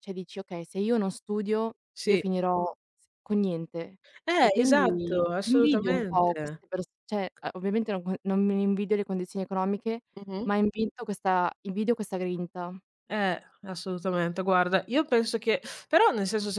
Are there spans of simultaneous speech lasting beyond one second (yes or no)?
yes